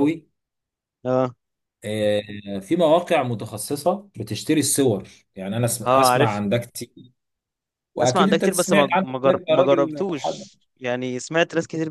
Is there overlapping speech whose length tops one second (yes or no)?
yes